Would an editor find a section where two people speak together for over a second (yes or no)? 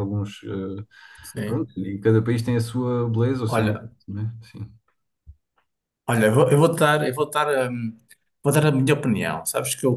no